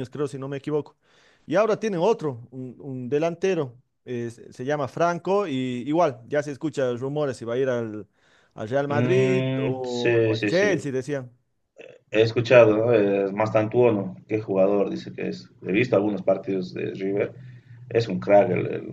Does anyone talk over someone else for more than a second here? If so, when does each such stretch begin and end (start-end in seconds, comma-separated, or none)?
8.9-10.8